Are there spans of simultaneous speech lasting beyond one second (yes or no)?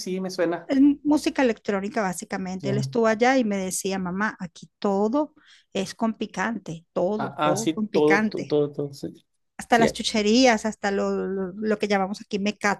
yes